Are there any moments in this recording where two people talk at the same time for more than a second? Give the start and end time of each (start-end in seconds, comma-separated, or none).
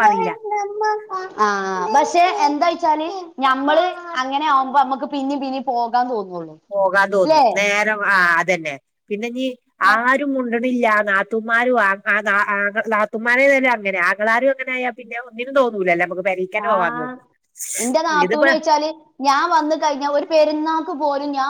none